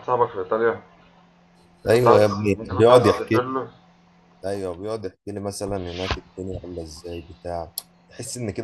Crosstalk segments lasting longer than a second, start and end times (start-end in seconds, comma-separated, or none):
1.9-3.4